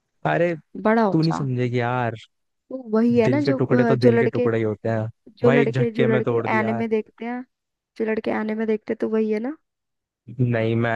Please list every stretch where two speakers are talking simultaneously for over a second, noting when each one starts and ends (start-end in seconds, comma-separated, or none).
3.2-4.5, 5.3-6.8